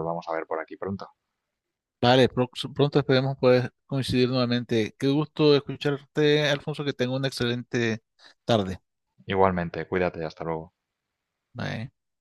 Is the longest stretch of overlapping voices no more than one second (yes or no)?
yes